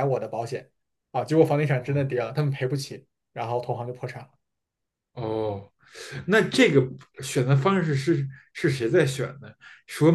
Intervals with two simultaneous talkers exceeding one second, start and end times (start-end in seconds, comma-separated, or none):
none